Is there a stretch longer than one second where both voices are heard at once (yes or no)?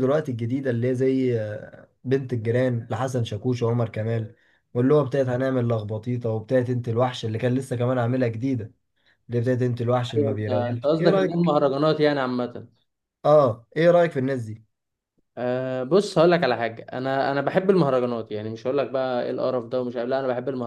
yes